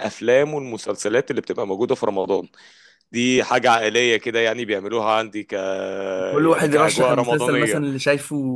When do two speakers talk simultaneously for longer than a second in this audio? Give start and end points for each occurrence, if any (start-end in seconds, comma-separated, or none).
6.4-7.8